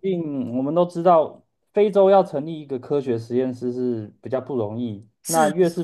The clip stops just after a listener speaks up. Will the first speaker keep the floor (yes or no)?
yes